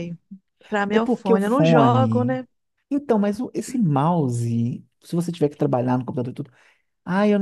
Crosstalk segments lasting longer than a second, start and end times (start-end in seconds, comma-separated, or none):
0.9-2.4